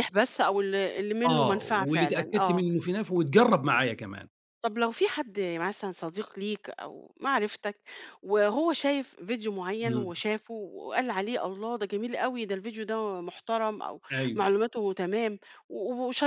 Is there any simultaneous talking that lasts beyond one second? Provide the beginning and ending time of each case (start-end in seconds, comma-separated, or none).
1.2-2.6